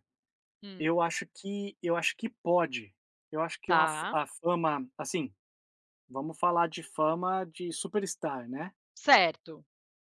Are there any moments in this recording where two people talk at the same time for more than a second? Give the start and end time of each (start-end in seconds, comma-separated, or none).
none